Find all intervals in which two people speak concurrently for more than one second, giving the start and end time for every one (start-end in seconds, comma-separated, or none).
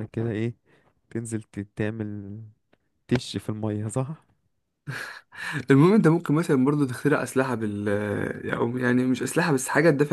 none